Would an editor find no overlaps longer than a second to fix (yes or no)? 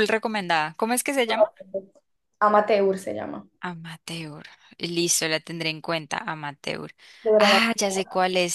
yes